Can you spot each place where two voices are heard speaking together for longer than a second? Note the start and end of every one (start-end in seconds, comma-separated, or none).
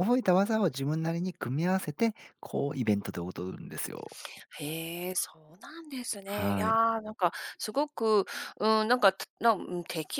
none